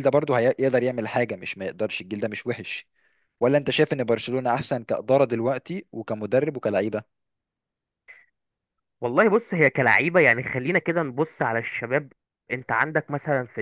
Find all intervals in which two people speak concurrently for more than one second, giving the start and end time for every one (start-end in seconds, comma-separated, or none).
none